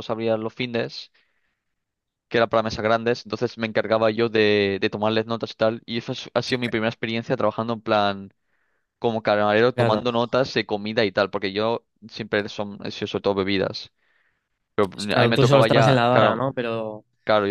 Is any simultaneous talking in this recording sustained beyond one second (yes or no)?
yes